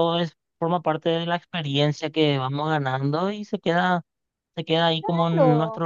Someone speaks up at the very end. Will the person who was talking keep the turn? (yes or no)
yes